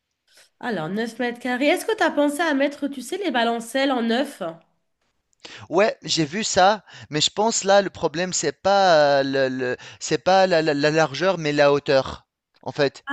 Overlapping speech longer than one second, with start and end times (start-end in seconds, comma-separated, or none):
none